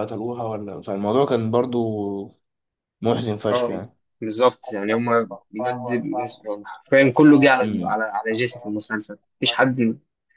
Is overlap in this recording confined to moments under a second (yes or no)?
yes